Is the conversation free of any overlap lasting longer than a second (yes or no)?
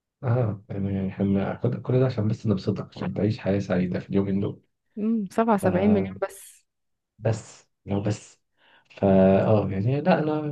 yes